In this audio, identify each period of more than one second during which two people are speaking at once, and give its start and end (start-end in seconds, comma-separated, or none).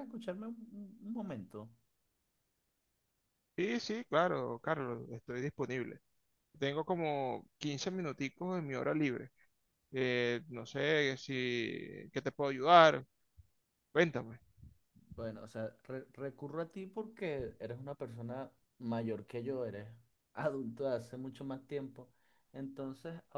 none